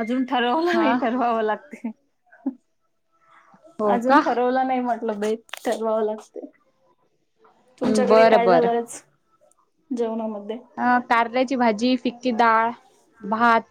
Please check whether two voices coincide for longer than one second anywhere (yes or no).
no